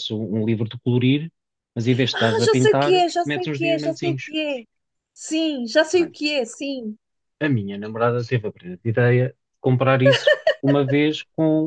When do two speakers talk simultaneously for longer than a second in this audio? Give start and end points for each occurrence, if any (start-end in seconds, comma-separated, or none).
2.1-4.3